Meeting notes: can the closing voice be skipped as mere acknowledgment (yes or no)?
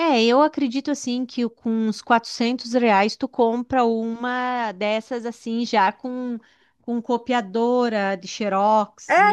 no